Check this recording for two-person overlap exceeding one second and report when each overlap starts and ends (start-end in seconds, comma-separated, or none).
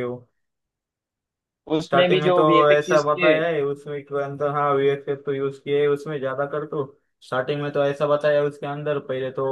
1.8-3.3